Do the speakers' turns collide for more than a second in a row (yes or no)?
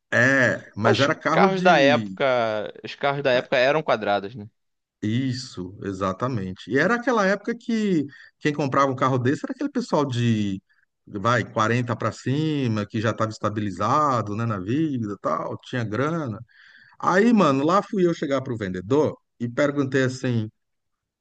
yes